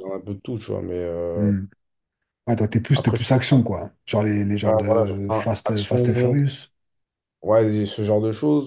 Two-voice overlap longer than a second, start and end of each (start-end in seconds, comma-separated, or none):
4.6-6.4